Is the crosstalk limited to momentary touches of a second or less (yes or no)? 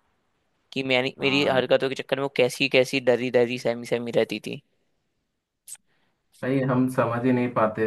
yes